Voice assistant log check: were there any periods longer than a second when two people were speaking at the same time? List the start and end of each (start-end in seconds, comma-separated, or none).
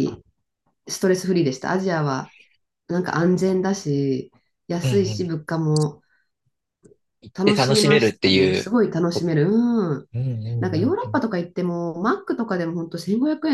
7.3-8.7